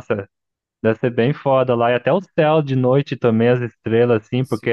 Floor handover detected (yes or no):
yes